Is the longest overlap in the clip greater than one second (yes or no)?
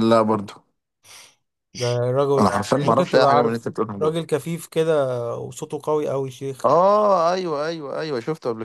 yes